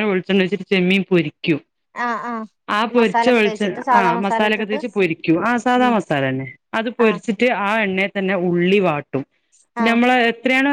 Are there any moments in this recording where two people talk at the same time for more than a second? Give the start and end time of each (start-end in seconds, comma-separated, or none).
3.0-4.8